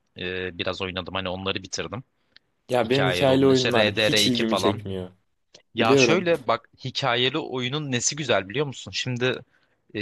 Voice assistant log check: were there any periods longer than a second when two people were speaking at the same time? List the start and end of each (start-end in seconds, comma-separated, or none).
2.8-4.8